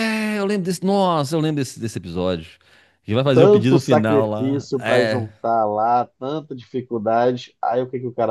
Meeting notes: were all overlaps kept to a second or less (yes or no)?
no